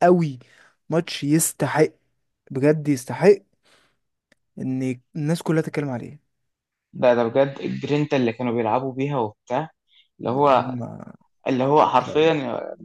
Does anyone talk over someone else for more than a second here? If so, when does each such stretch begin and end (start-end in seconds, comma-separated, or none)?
none